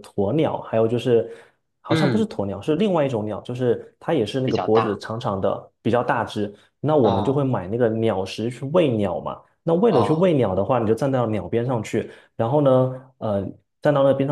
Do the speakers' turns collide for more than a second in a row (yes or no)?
no